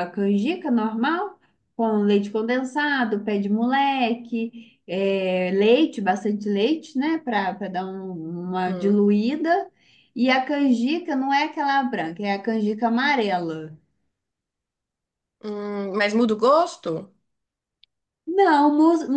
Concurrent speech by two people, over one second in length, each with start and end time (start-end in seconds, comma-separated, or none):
none